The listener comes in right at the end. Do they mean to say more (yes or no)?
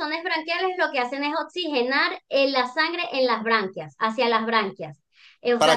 yes